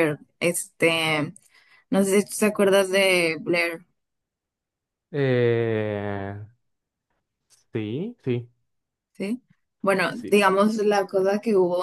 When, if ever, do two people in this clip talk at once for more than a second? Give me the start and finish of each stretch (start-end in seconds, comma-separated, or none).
none